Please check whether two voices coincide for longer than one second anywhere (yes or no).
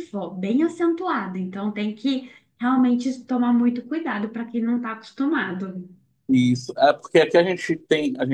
no